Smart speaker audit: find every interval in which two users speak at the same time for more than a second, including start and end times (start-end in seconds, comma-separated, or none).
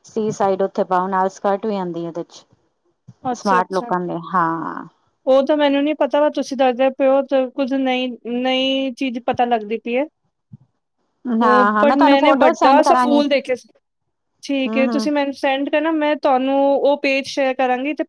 11.4-13.2